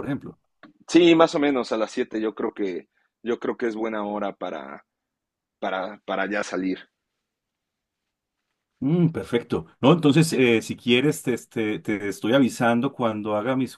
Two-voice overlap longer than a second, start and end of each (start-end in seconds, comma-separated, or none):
none